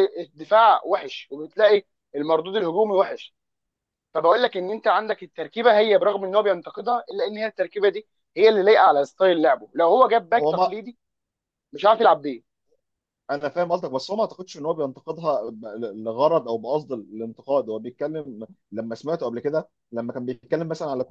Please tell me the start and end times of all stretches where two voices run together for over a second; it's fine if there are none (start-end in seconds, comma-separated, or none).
none